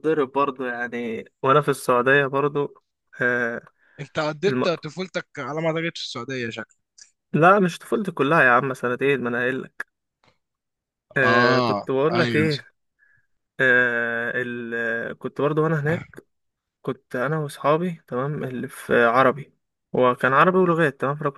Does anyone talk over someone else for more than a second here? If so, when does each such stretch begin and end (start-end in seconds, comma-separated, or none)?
11.2-12.5